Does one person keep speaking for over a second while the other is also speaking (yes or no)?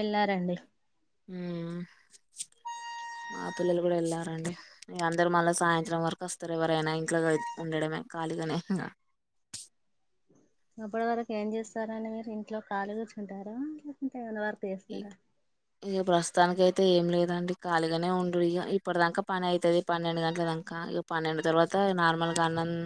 no